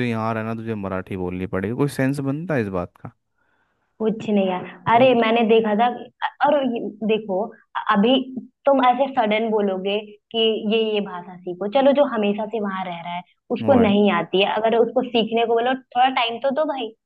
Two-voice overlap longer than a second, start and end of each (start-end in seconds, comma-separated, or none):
none